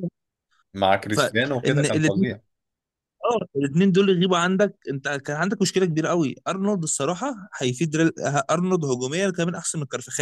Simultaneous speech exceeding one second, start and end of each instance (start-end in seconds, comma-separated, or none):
1.1-2.3